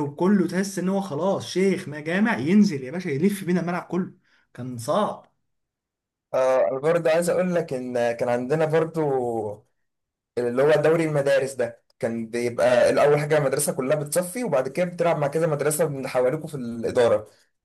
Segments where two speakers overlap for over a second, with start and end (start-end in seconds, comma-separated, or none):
none